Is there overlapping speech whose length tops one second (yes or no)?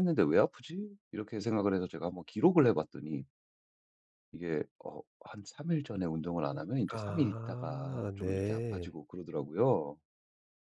yes